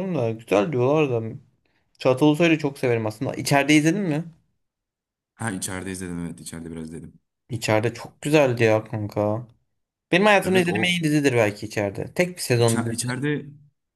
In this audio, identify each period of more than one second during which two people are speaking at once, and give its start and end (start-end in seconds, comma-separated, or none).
none